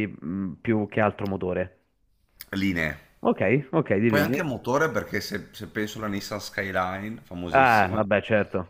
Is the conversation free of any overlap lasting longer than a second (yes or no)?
yes